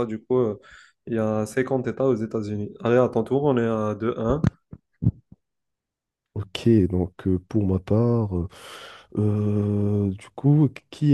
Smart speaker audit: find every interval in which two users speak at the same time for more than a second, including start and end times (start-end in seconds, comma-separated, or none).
none